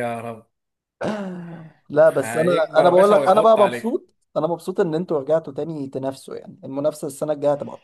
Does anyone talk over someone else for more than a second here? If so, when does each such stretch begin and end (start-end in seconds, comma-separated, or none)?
2.1-3.9